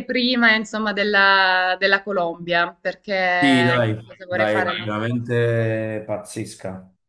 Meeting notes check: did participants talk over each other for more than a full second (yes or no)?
yes